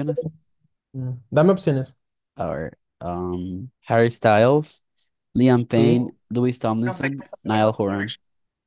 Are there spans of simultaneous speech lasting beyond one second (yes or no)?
yes